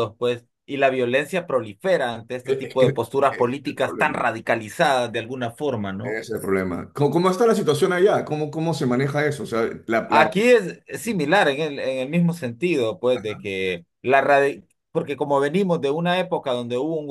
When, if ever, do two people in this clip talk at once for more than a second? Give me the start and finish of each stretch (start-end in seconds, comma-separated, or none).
2.4-4.2